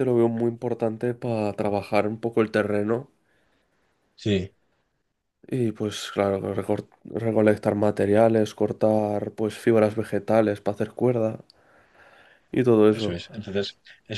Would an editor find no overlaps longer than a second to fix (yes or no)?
yes